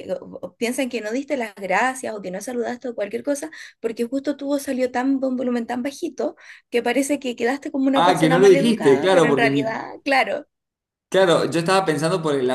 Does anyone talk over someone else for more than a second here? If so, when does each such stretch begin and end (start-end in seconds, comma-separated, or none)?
7.9-9.8